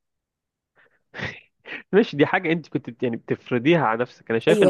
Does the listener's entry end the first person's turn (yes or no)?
yes